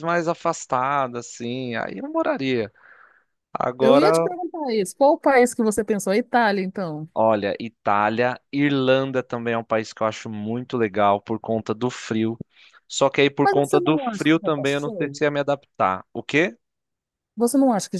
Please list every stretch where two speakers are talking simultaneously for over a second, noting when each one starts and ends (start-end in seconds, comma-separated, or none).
13.4-15.2